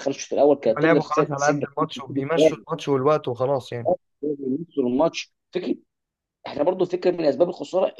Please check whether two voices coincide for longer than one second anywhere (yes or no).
yes